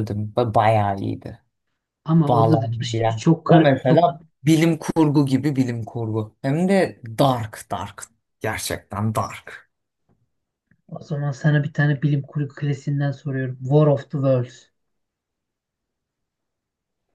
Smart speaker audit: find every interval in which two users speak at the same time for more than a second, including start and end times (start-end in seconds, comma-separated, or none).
2.3-4.2